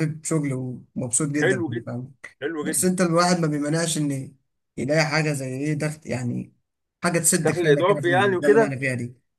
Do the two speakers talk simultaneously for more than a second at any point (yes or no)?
yes